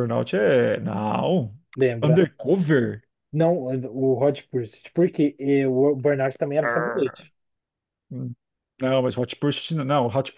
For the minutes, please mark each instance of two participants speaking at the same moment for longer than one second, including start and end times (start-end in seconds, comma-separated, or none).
none